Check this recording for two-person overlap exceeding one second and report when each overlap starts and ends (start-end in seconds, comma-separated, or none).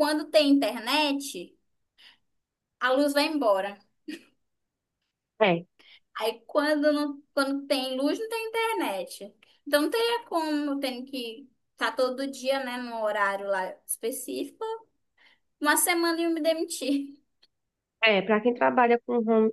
none